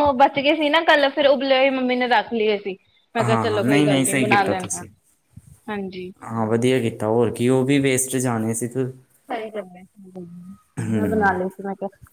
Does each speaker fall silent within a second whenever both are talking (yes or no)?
no